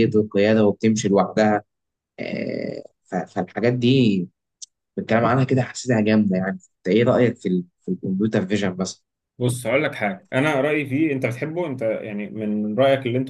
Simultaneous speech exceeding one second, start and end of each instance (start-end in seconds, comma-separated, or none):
none